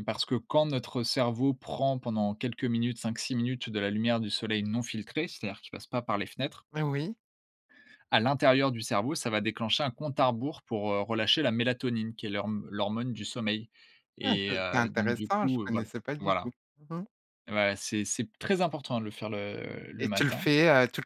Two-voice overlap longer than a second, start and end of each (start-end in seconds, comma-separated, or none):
14.2-16.5